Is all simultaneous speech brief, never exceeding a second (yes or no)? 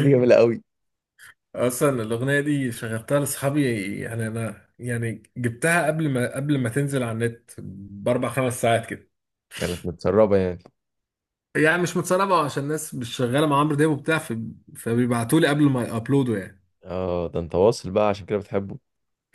yes